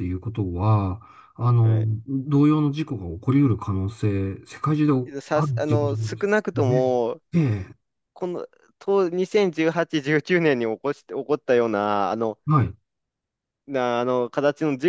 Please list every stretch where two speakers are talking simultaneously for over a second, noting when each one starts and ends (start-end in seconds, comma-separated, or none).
5.3-6.8